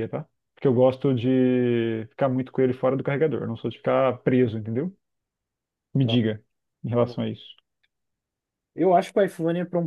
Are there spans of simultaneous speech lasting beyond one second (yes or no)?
no